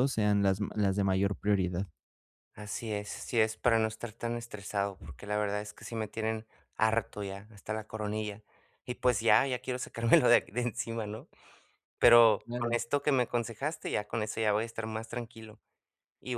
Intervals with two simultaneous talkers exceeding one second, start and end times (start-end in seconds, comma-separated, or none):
none